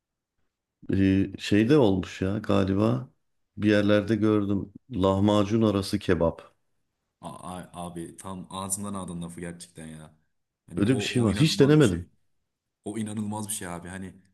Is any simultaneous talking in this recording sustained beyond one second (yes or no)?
yes